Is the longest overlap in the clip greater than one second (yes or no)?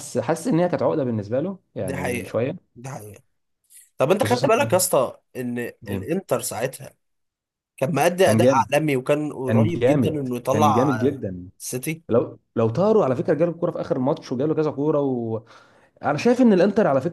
yes